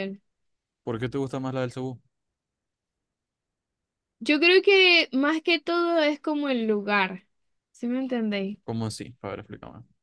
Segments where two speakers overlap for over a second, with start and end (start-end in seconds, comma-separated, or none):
none